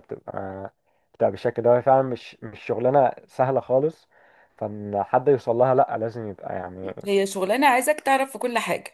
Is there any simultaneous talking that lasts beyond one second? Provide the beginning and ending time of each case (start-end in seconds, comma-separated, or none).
none